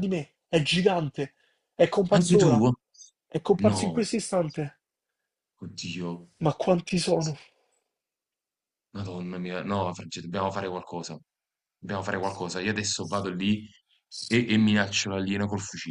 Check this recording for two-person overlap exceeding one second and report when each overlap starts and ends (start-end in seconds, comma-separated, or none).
none